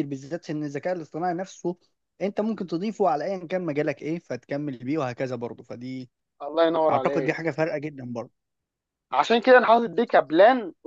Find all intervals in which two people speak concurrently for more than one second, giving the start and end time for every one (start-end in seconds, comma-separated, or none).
none